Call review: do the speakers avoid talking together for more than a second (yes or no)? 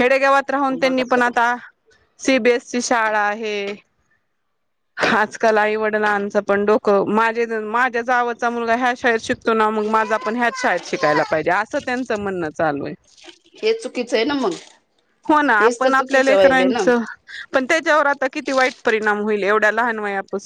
no